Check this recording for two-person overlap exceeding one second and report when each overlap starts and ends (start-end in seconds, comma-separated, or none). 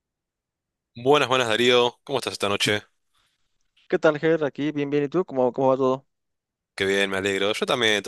none